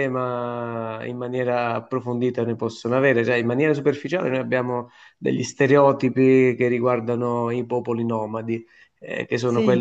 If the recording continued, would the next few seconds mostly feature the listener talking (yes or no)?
no